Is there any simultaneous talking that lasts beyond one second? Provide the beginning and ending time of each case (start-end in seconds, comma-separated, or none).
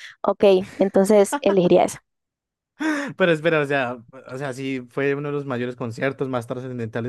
none